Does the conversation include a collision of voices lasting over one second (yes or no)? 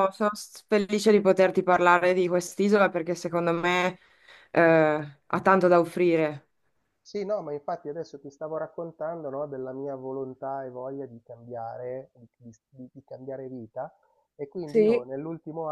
no